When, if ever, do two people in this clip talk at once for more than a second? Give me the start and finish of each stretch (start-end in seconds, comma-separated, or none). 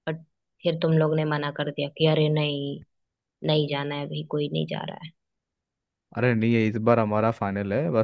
none